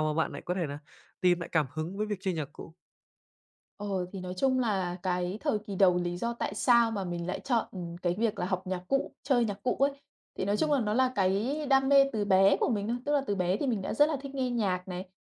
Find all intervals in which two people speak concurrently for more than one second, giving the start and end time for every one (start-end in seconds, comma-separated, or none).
none